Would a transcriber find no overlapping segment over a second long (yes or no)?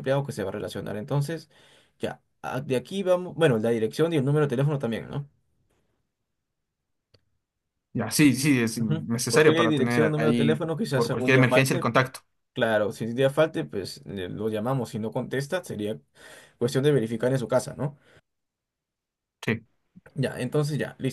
no